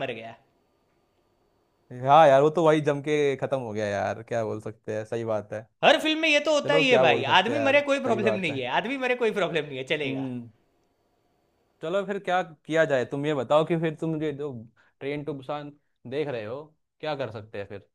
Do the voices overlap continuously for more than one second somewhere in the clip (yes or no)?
yes